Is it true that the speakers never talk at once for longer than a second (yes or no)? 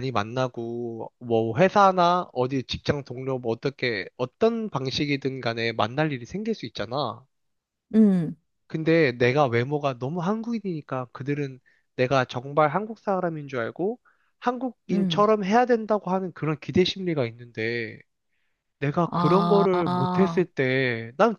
no